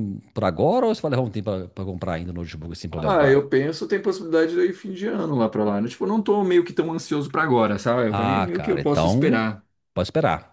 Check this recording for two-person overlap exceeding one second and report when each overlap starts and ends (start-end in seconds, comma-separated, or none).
8.1-9.4